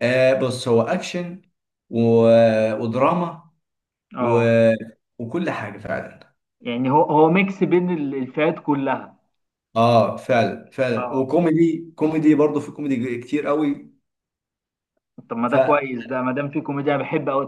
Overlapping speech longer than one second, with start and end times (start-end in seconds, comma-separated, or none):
none